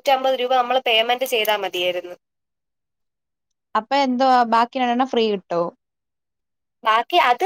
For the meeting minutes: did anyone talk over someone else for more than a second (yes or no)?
no